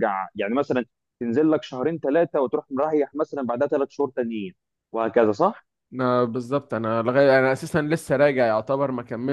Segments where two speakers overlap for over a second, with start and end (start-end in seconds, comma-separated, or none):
none